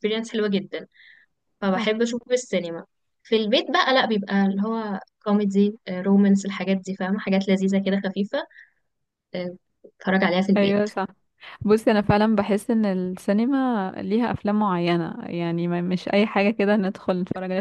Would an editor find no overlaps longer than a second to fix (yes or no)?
yes